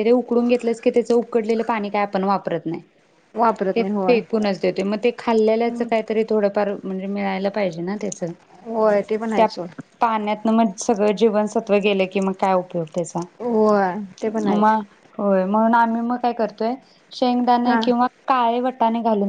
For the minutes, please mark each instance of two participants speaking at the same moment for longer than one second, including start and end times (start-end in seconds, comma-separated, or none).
none